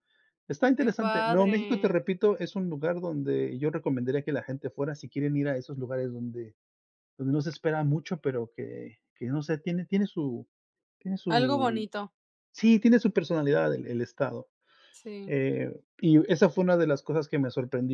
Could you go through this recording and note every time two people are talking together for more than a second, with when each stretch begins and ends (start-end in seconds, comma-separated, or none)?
0.8-2.0